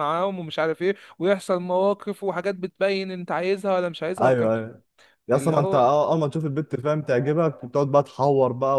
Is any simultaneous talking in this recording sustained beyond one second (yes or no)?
no